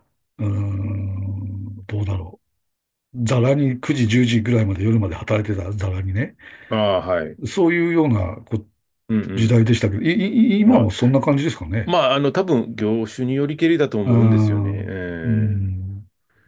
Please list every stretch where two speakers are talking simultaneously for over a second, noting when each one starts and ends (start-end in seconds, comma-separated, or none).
14.0-15.8